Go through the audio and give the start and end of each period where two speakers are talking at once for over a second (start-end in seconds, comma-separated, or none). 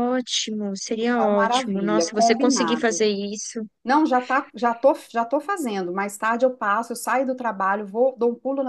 1.0-3.0